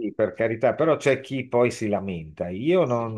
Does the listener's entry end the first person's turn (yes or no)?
no